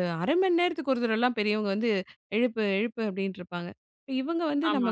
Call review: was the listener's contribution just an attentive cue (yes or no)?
yes